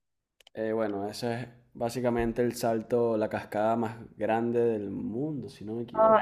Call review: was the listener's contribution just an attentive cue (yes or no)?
no